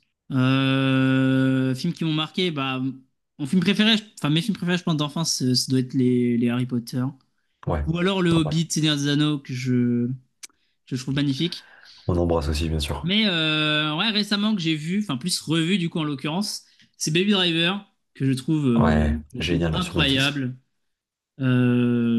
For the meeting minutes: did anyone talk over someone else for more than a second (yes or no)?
yes